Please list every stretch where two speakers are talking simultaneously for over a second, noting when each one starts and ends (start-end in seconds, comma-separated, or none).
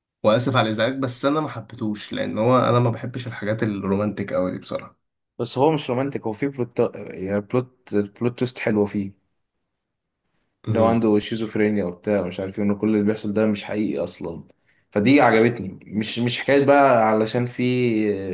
none